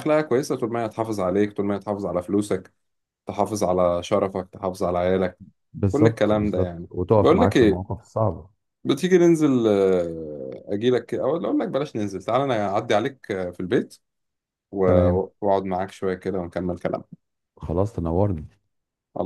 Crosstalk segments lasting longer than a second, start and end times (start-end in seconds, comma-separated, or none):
5.9-7.8